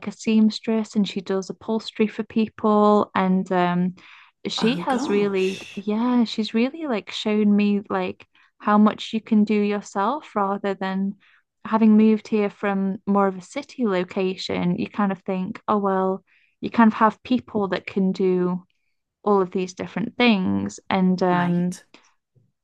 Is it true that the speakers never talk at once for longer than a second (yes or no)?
no